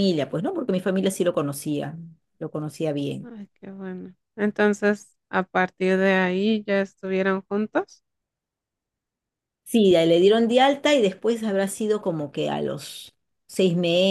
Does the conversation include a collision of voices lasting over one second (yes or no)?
no